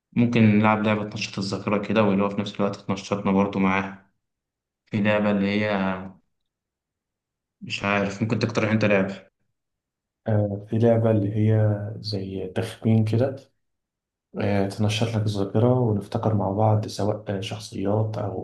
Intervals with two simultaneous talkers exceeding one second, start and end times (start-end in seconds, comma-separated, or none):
none